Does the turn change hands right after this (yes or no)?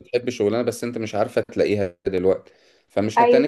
no